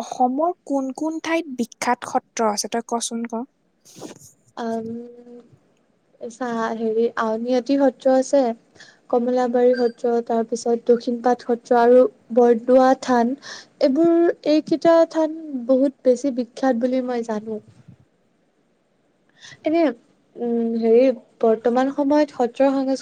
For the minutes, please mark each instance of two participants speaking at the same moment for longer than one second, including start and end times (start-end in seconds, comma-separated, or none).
none